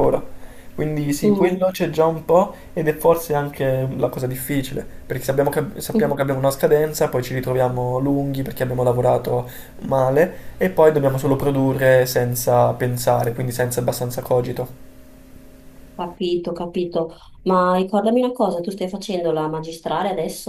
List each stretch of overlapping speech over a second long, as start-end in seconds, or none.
none